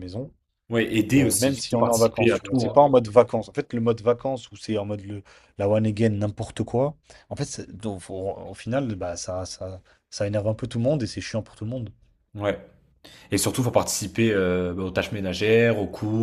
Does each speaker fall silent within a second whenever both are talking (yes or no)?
no